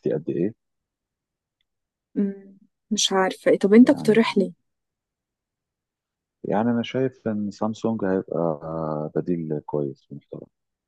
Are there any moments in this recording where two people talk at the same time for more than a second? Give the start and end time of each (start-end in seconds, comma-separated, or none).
none